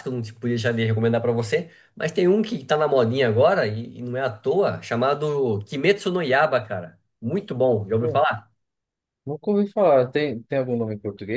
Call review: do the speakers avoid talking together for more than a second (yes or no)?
yes